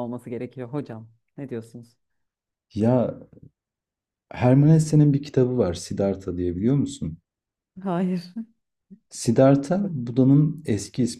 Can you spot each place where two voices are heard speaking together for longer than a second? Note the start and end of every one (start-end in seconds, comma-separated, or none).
none